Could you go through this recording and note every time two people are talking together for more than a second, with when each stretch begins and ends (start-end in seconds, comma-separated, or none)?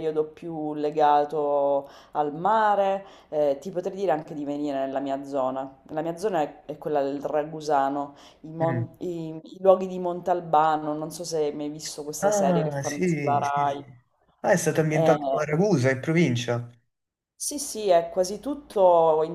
12.2-13.8